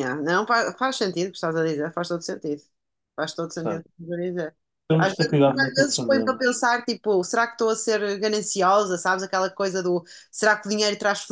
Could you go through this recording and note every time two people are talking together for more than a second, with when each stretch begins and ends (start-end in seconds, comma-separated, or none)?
5.0-6.5